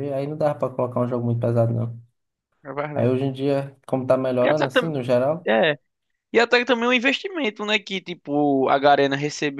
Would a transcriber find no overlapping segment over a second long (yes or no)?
yes